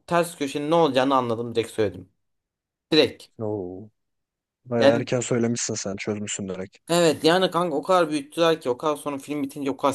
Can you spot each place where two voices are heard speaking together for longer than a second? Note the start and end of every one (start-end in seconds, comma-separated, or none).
none